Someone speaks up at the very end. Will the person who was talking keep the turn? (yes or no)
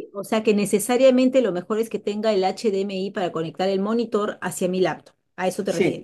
no